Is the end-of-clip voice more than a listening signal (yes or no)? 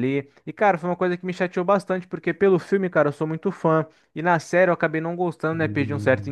no